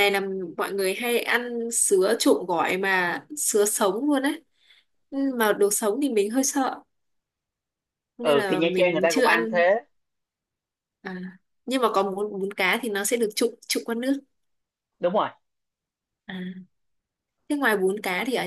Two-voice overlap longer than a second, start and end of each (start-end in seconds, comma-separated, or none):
8.2-9.6